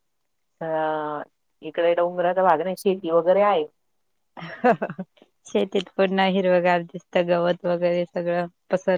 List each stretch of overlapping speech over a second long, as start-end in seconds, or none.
none